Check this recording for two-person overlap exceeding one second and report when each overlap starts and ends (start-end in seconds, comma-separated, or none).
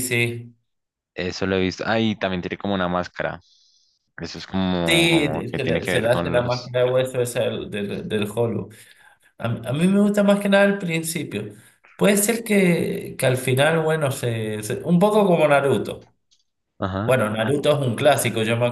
4.9-6.7